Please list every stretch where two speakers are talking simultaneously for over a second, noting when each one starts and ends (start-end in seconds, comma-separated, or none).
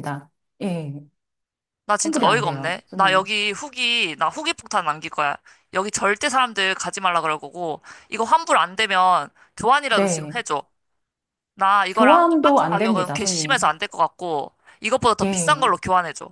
2.0-3.2, 11.9-13.7